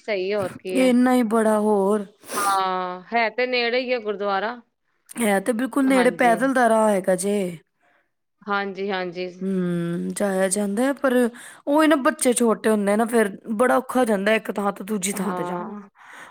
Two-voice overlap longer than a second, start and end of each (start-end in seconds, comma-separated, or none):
none